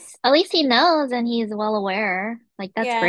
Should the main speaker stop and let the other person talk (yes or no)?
yes